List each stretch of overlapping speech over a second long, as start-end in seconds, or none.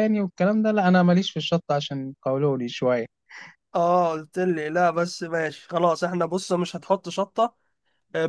none